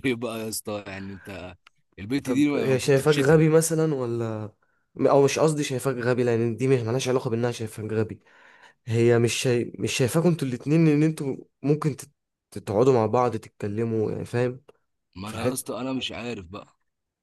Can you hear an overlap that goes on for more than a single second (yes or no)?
yes